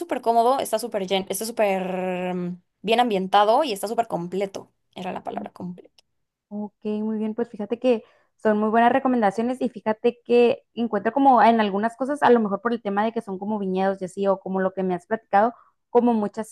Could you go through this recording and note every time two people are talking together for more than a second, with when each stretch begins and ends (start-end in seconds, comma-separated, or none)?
none